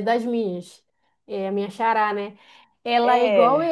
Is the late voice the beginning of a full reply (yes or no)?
no